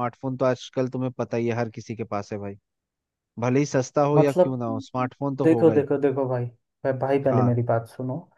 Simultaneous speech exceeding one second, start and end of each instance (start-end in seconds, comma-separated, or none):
none